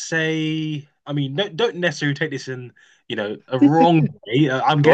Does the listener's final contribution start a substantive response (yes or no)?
no